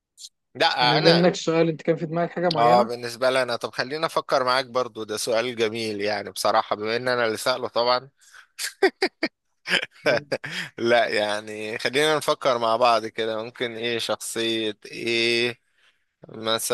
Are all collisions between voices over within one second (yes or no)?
yes